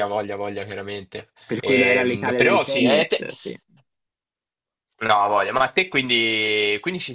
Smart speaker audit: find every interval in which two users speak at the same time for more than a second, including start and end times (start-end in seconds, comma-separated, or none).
1.5-3.3